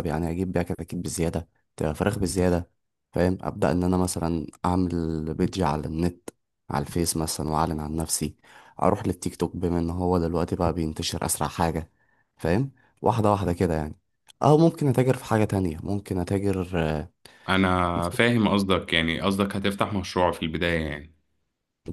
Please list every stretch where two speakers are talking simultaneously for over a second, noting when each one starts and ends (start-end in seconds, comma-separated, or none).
none